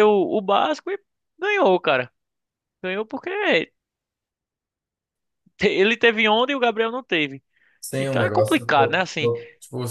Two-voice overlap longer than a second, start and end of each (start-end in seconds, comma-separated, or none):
8.0-9.3